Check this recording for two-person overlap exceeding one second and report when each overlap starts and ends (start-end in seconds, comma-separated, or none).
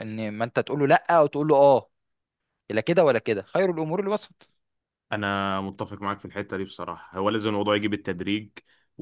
none